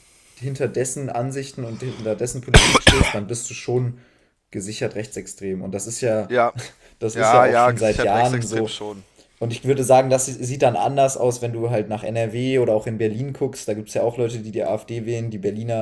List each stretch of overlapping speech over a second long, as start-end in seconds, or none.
7.1-8.8